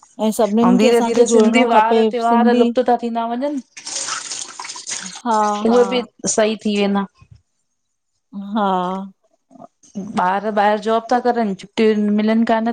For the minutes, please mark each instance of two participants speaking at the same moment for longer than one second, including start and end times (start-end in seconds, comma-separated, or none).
0.8-2.6